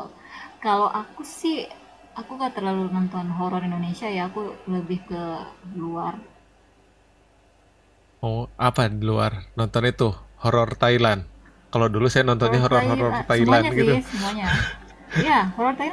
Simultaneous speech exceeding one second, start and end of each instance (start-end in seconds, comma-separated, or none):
12.4-13.9